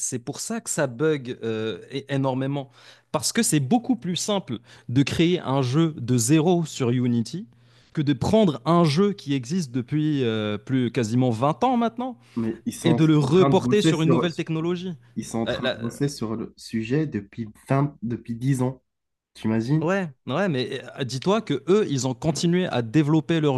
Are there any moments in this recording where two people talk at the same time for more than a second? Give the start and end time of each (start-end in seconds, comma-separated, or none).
12.8-14.3